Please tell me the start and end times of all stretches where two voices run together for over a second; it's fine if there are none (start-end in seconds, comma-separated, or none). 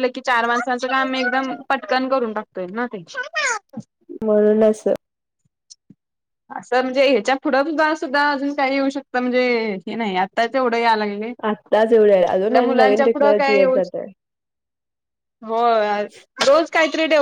11.5-13.8